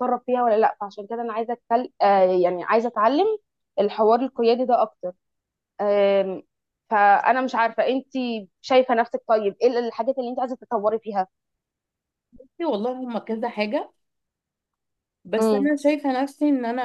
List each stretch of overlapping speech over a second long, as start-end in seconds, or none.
none